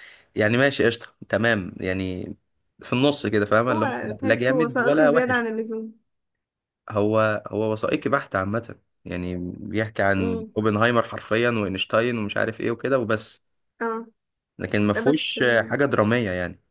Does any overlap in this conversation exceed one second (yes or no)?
yes